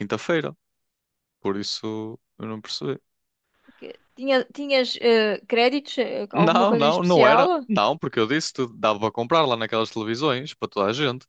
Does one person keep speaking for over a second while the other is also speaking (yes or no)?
yes